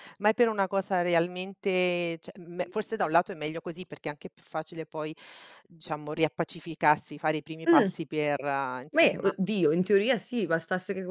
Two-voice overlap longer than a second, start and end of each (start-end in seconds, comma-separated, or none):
none